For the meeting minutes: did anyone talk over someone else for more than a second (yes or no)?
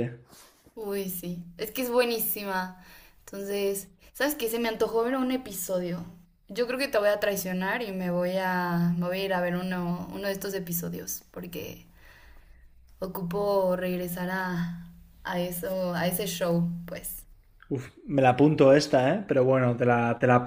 no